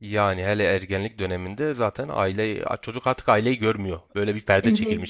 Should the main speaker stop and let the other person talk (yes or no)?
yes